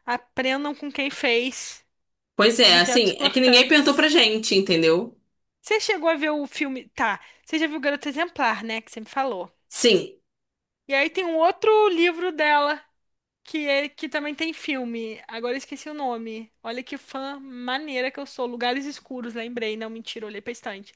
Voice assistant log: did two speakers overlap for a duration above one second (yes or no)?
yes